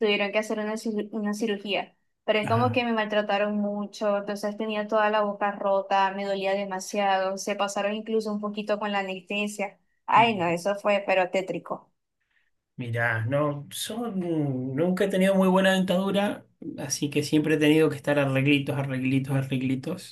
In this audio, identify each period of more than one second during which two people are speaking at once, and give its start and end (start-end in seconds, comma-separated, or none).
none